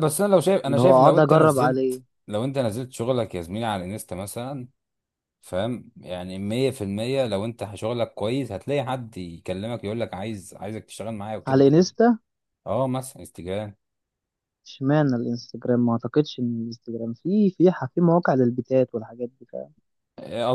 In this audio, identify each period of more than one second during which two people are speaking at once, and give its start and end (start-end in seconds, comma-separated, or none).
0.7-2.0